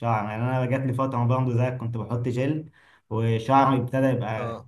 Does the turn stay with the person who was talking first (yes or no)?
yes